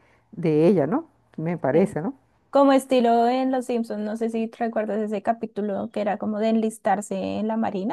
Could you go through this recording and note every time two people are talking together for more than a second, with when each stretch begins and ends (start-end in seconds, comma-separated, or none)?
none